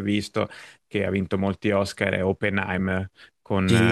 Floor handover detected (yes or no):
yes